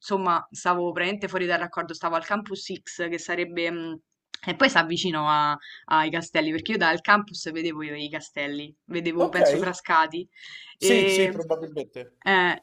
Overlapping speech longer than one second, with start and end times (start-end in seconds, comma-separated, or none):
none